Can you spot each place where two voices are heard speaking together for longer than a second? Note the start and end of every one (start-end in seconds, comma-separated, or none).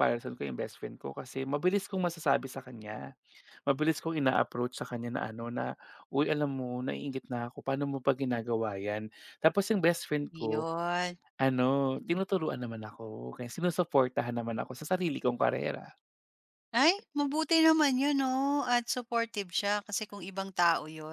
none